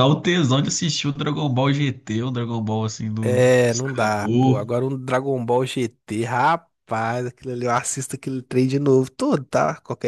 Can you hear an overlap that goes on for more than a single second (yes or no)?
yes